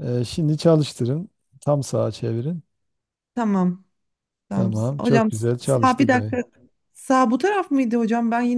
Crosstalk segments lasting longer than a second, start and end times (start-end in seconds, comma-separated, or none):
4.5-6.4